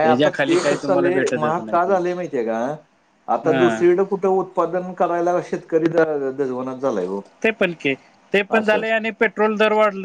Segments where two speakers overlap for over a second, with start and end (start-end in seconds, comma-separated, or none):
none